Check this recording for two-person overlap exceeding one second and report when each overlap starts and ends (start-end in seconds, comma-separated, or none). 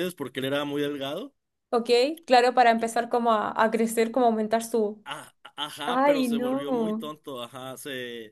5.8-7.1